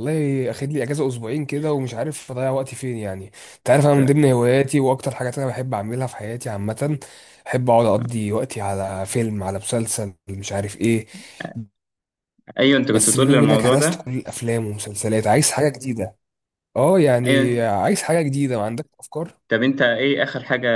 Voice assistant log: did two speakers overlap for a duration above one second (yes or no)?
yes